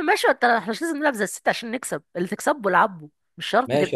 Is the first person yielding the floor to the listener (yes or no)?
yes